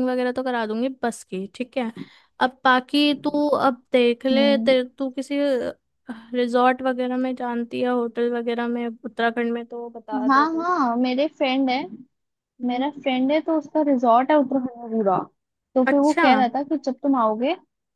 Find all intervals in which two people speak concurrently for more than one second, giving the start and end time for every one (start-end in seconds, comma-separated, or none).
none